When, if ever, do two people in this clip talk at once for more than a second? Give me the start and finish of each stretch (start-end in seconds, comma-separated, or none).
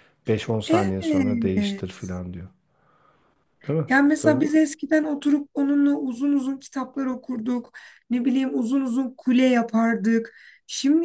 0.7-2.1